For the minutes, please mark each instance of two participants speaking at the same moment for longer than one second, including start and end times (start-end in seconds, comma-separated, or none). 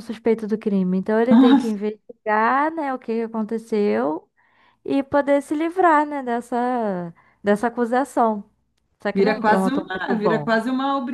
9.1-10.5